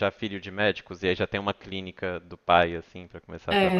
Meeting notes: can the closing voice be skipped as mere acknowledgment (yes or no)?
no